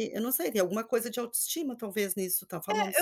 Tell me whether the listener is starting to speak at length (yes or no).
yes